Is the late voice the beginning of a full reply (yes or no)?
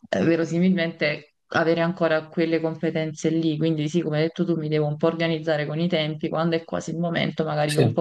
no